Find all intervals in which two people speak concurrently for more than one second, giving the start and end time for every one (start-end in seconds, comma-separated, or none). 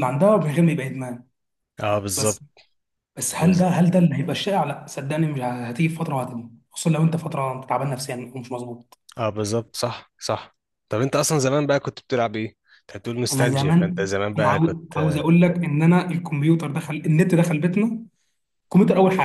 13.3-15.2